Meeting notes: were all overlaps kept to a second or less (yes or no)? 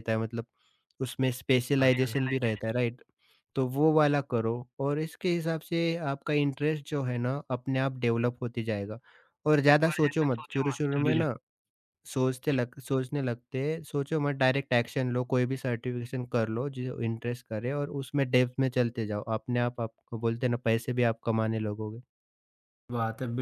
no